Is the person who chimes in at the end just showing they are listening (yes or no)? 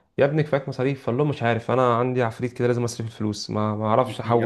no